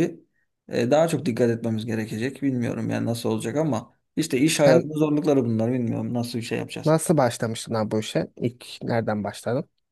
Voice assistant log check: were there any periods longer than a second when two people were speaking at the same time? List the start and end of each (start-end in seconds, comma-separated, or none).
none